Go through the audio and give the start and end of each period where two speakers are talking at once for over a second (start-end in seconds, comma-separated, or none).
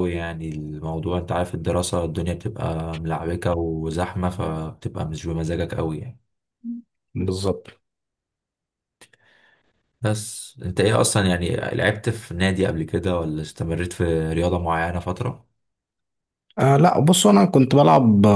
none